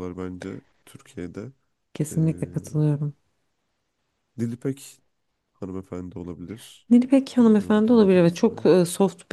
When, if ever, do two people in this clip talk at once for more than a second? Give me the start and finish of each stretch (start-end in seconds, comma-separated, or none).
7.4-8.7